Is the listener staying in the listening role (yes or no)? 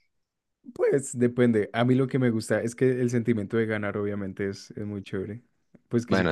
yes